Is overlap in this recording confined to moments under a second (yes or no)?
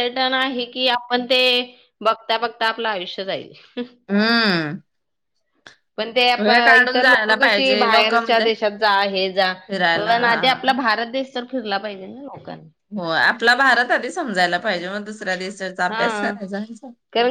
no